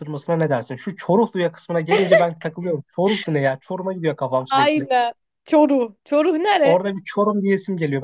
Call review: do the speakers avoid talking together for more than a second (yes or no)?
yes